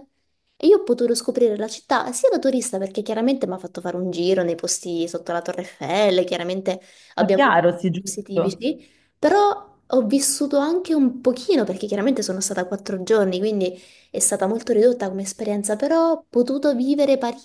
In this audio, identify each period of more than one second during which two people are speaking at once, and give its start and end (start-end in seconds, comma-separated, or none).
7.2-8.7